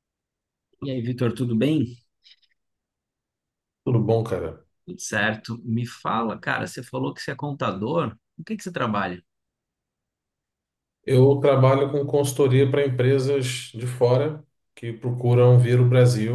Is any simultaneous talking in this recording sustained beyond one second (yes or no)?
no